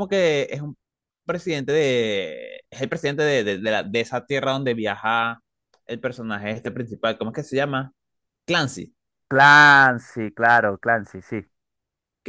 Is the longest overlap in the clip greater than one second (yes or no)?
no